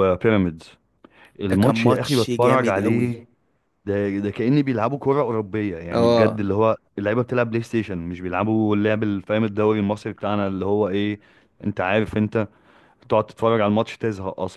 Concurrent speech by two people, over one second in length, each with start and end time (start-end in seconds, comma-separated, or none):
1.5-3.2